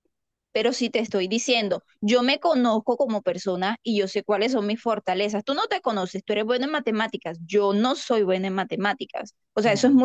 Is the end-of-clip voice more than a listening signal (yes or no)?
no